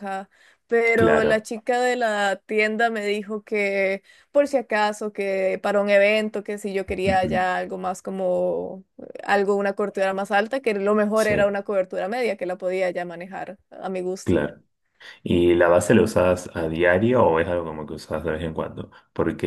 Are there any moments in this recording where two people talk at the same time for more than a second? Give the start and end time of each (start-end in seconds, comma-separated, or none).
none